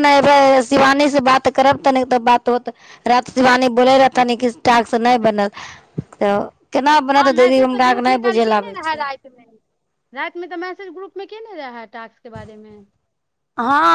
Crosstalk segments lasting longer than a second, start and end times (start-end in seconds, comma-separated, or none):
7.2-9.0